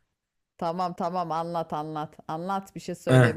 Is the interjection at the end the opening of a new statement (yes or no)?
yes